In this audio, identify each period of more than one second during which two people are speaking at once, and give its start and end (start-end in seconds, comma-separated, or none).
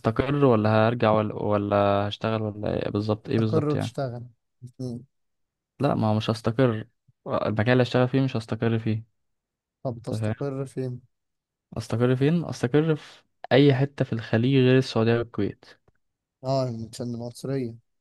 none